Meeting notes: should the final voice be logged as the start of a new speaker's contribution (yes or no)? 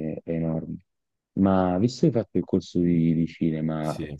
no